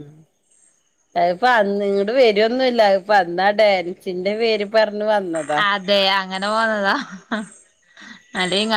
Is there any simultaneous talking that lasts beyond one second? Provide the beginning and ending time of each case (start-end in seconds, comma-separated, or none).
none